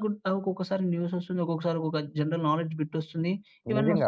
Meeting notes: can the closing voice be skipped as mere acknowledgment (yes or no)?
no